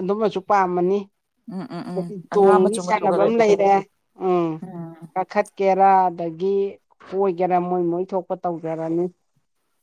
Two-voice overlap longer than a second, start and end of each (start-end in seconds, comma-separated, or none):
1.9-3.5